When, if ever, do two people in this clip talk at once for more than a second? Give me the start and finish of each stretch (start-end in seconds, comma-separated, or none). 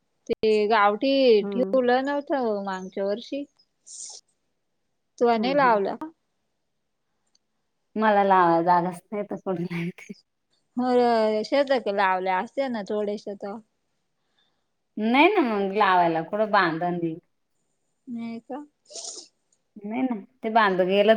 none